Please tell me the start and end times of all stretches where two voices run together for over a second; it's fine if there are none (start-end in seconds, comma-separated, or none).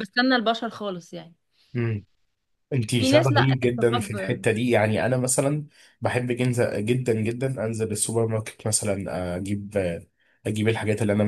3.0-4.4